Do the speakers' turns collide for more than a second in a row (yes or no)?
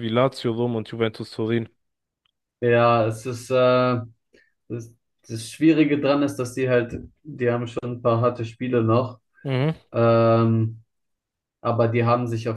no